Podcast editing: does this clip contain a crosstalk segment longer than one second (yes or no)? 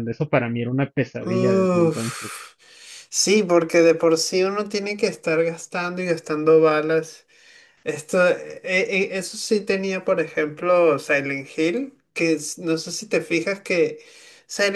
yes